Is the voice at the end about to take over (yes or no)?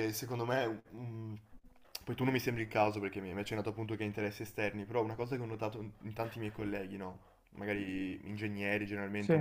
no